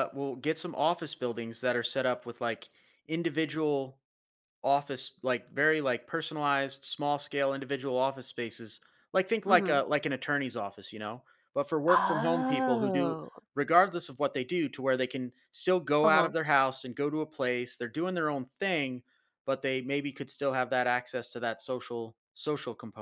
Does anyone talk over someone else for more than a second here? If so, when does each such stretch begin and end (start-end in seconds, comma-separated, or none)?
11.9-13.2